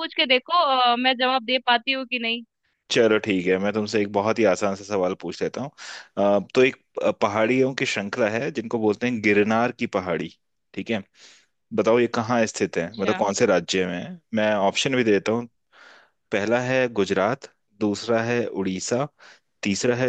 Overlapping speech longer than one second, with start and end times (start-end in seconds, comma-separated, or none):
none